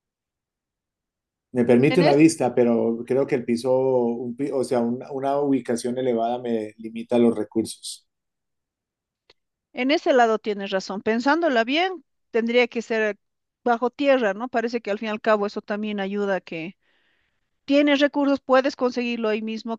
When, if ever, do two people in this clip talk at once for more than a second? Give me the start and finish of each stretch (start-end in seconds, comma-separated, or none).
none